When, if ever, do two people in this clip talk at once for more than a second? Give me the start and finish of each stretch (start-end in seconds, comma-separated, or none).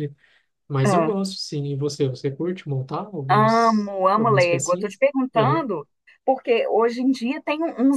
3.3-5.6